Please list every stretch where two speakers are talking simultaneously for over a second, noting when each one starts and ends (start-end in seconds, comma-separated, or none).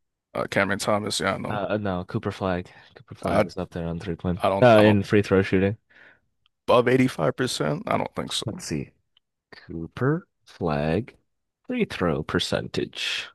none